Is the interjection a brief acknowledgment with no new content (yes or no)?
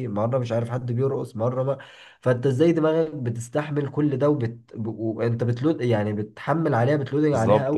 no